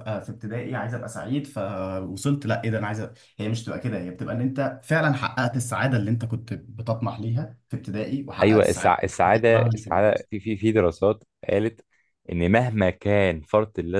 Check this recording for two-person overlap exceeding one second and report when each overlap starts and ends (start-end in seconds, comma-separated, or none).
8.4-10.1